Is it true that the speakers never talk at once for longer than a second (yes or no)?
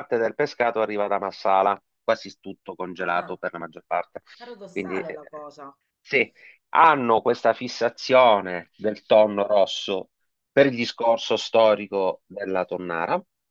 yes